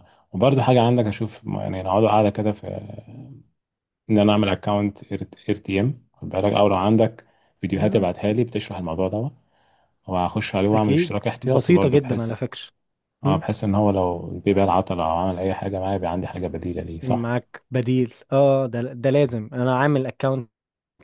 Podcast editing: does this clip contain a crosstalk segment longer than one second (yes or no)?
yes